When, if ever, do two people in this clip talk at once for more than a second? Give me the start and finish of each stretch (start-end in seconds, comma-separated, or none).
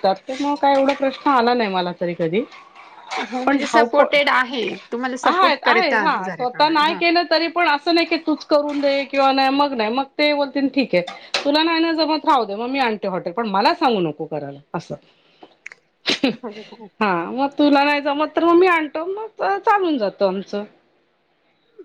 5.6-7.0